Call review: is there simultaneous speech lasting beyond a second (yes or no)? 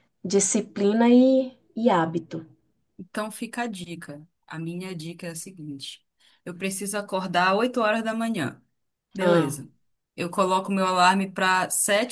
no